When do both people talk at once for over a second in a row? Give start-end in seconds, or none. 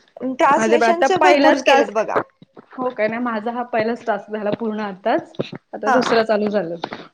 0.6-2.0